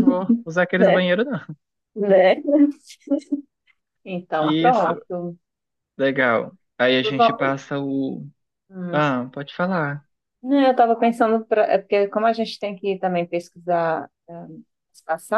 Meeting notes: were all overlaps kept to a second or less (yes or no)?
yes